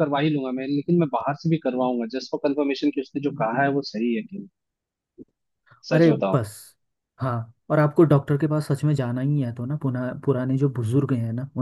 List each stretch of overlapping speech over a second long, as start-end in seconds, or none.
none